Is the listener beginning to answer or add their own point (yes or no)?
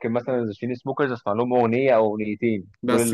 no